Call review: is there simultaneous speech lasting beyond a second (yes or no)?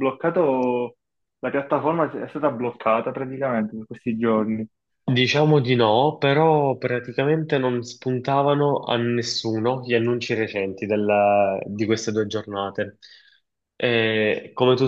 no